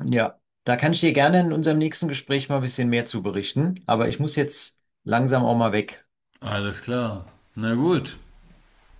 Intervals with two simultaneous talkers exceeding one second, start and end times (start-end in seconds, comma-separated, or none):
none